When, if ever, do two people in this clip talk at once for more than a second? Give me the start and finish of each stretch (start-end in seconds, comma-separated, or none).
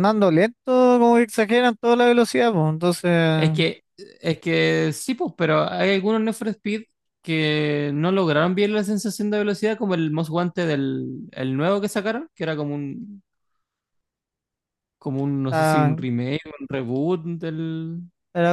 none